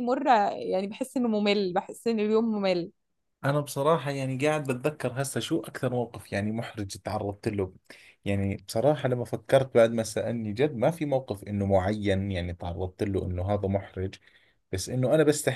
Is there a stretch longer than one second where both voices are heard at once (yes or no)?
no